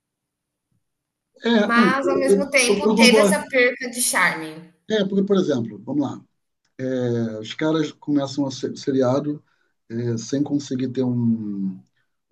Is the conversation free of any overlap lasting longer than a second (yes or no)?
no